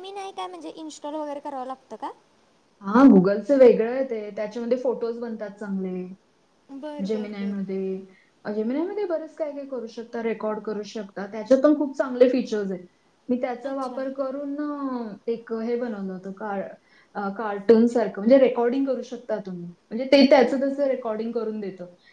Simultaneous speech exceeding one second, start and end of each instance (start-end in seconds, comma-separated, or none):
none